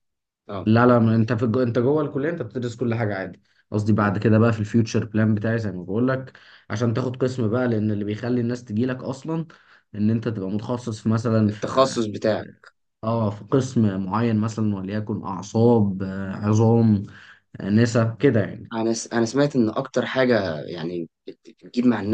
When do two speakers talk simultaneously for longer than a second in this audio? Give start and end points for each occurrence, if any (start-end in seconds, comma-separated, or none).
none